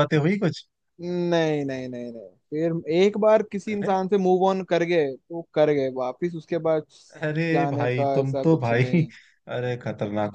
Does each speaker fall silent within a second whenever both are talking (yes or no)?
no